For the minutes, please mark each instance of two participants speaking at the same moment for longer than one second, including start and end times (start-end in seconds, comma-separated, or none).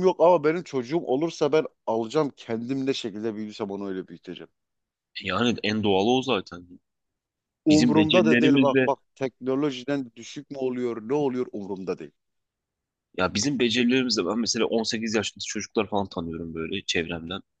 7.7-8.9